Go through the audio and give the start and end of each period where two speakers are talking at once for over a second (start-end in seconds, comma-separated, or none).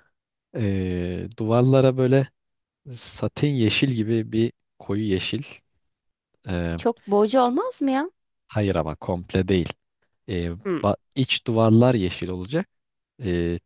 none